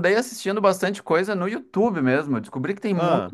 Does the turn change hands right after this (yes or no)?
no